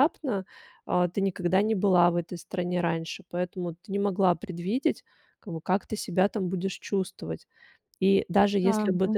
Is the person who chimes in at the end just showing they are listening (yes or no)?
yes